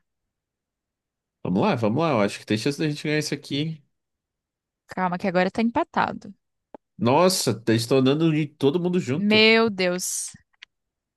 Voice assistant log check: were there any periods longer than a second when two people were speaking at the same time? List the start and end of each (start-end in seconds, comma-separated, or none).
none